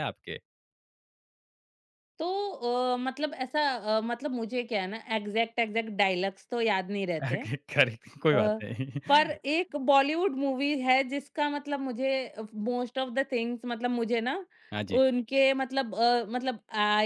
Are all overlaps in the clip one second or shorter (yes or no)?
yes